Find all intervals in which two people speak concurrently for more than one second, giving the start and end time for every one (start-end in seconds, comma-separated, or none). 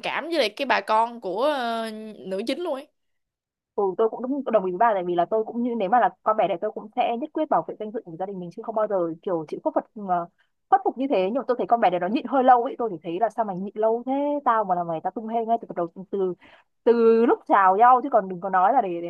none